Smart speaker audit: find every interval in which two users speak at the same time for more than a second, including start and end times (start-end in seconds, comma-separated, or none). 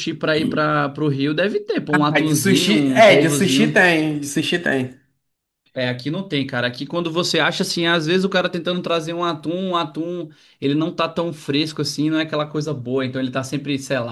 1.9-3.8